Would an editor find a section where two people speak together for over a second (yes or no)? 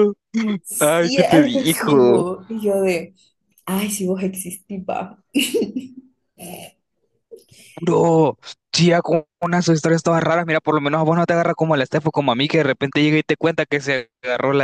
yes